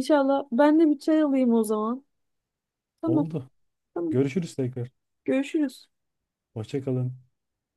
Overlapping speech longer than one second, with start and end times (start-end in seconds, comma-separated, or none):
none